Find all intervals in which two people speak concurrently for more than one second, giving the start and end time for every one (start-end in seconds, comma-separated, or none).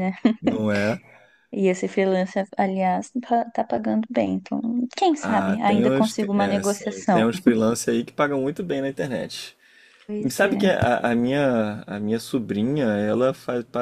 5.2-7.3